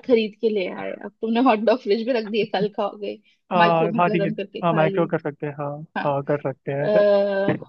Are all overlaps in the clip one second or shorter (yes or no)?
no